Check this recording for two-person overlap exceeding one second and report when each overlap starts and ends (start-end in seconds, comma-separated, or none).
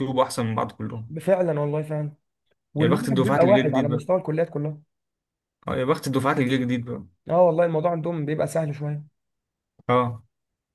2.8-4.0